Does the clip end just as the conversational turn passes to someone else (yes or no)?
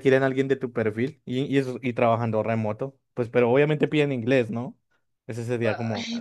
yes